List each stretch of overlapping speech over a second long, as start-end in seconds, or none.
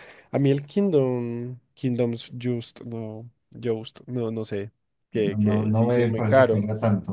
5.1-6.6